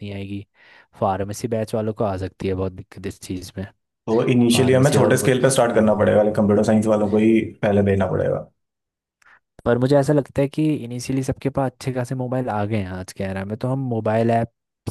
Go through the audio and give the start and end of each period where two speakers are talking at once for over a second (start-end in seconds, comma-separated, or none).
4.5-6.1